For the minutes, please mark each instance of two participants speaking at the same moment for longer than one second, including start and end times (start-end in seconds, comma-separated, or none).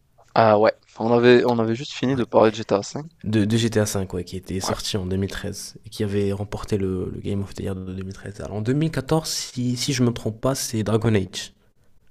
none